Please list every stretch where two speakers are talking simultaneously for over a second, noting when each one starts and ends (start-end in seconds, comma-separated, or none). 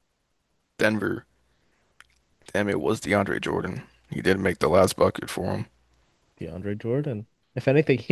none